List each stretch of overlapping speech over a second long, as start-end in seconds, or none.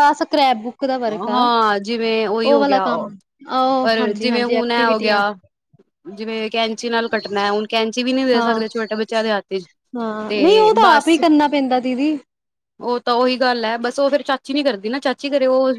3.8-5.2